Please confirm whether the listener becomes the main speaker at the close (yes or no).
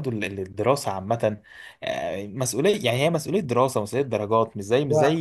no